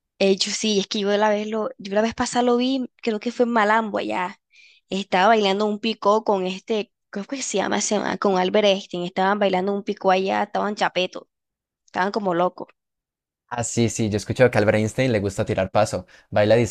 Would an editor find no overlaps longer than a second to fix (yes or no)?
yes